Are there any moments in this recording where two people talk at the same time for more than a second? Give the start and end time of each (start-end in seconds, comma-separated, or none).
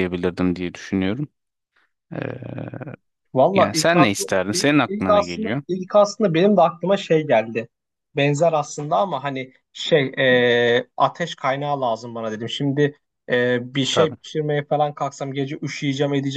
3.5-5.6